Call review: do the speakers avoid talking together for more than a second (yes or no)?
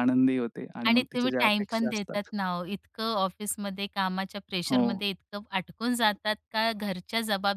no